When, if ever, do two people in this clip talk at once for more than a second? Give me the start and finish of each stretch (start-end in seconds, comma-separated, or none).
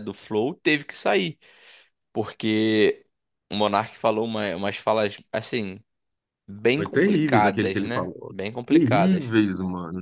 6.7-9.2